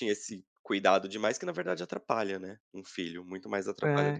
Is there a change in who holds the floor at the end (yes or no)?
yes